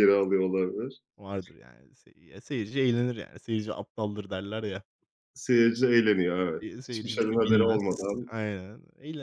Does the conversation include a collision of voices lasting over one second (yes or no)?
yes